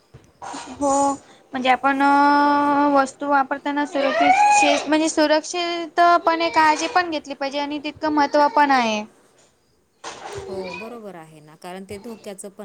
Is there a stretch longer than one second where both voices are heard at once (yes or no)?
no